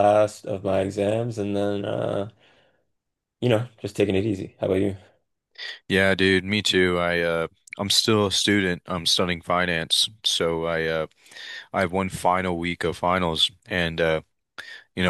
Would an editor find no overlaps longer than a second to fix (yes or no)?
yes